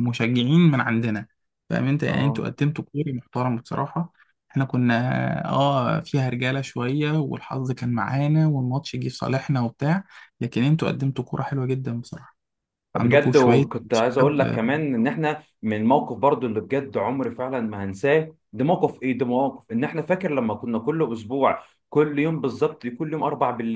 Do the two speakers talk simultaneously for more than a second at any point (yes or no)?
yes